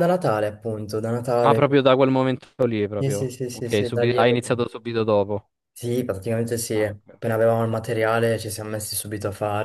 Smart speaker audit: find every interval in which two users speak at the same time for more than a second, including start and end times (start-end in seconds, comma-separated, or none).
3.0-4.7